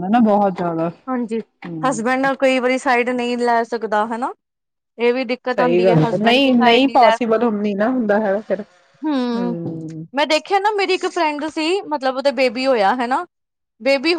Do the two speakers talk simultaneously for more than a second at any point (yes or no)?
yes